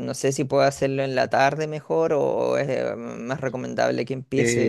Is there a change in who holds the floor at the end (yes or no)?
yes